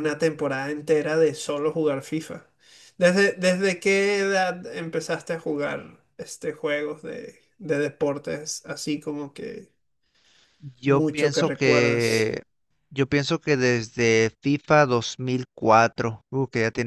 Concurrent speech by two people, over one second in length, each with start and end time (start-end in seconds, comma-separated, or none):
10.8-12.4